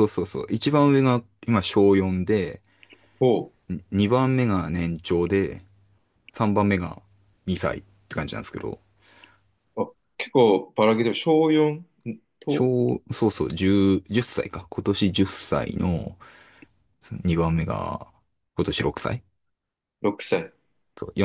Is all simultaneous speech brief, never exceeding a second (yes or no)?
yes